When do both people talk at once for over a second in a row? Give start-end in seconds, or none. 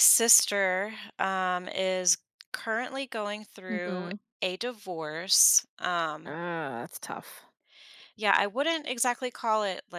none